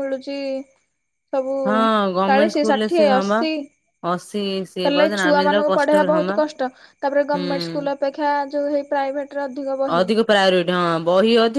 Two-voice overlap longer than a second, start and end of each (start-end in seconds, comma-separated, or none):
none